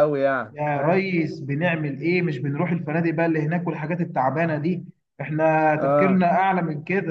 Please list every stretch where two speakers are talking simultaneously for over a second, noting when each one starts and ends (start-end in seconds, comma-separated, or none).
none